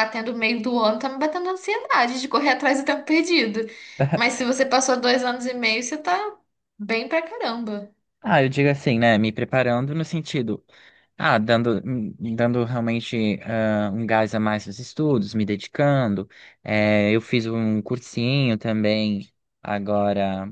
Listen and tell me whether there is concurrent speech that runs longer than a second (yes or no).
no